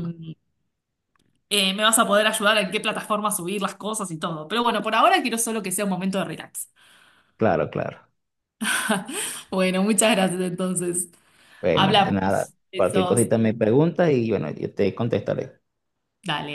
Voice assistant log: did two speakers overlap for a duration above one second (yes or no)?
yes